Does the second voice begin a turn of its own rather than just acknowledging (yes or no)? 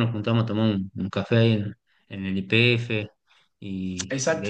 yes